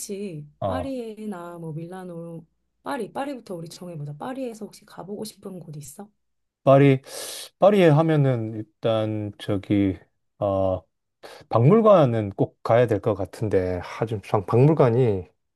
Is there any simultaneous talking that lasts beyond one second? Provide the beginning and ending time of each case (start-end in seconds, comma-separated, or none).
none